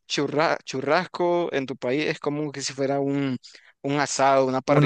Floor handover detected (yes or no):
yes